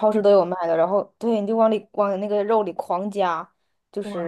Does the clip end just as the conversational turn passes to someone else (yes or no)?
no